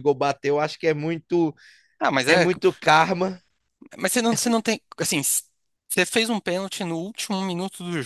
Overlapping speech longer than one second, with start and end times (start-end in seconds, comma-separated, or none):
none